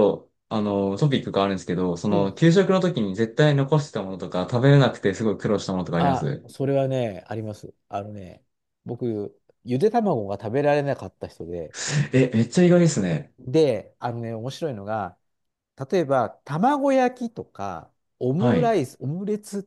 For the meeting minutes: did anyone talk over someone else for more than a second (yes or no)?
no